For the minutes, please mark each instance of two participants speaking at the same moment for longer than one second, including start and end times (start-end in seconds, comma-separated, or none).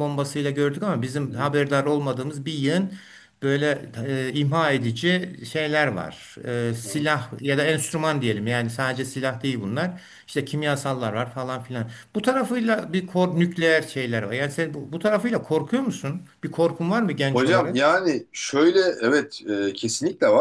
none